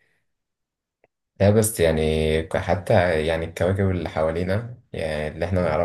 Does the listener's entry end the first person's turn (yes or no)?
no